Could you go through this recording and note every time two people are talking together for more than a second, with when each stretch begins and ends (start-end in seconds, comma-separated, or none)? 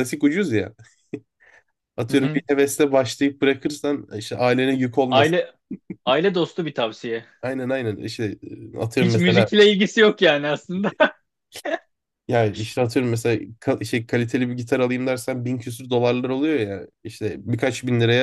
none